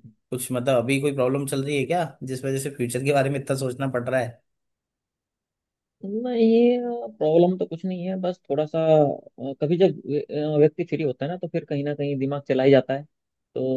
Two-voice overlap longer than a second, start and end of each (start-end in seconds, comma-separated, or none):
none